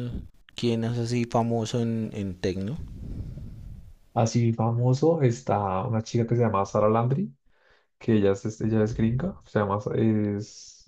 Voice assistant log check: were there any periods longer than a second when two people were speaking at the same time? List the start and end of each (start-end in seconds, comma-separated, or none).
none